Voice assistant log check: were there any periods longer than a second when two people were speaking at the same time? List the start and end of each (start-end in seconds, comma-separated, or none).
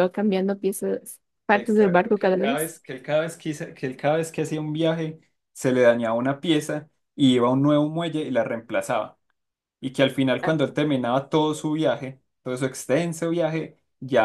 1.5-2.7